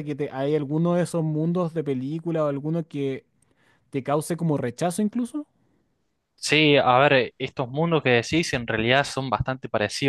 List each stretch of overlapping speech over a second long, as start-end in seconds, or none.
none